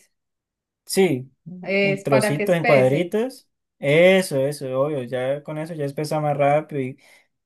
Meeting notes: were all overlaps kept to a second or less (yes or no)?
no